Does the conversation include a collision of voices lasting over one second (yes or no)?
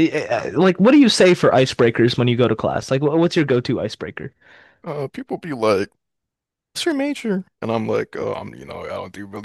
no